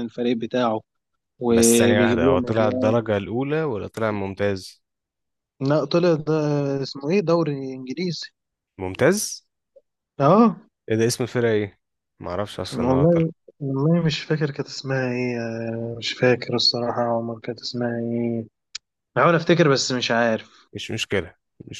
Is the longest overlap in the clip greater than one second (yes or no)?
yes